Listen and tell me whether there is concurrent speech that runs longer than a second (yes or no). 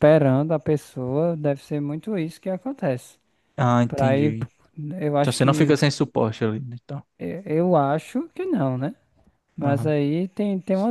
no